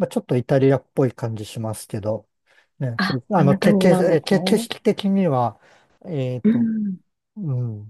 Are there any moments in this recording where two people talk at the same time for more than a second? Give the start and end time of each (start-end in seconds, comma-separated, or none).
3.0-4.7